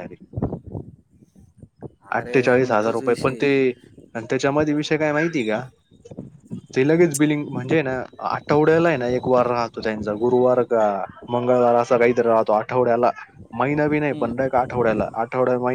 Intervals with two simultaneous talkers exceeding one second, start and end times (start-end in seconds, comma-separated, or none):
2.2-3.5